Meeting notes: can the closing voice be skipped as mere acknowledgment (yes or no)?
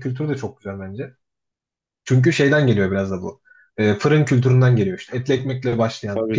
yes